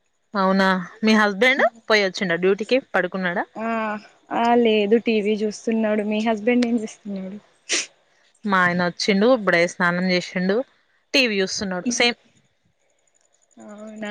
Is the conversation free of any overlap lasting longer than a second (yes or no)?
yes